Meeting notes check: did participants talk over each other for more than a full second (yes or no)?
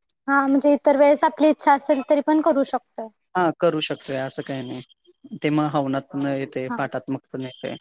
no